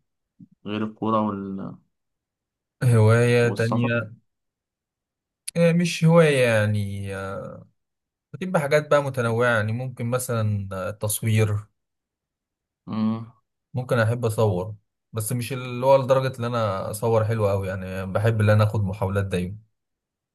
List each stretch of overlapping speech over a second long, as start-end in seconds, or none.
none